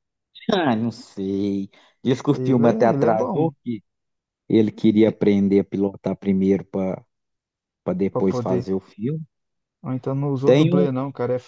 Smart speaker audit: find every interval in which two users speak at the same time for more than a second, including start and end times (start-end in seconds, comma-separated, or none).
2.3-3.5